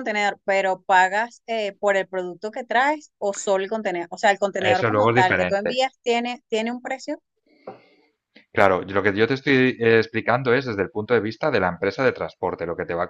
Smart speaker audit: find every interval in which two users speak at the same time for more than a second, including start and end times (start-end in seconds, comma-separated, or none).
4.6-5.8